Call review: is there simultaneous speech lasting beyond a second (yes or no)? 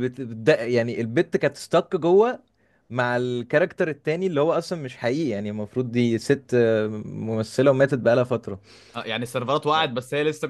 no